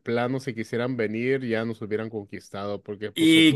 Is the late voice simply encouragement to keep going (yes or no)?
no